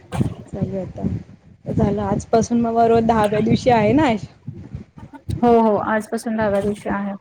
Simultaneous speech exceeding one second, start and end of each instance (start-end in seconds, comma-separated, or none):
none